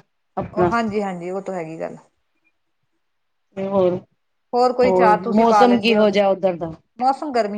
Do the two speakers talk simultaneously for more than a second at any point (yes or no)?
yes